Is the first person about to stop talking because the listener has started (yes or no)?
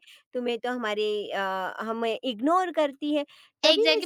yes